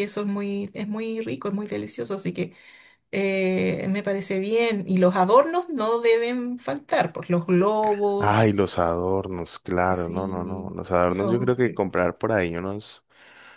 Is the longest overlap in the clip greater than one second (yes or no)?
yes